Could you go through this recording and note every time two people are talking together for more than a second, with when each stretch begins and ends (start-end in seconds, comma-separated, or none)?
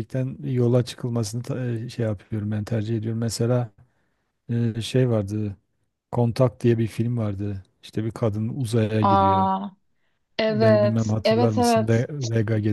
10.5-12.1